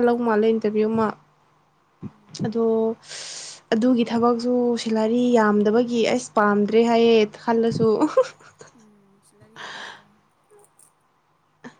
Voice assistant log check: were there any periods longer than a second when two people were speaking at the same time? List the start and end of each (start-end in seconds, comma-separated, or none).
none